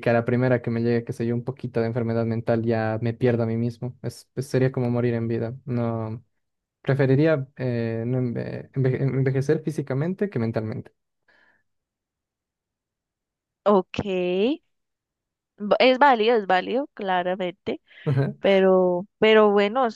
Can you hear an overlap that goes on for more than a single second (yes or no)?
no